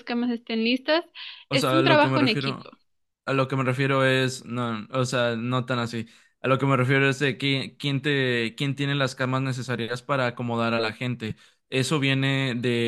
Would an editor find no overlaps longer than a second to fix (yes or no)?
no